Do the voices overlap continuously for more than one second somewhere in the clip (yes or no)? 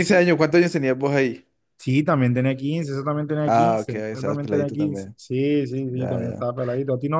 yes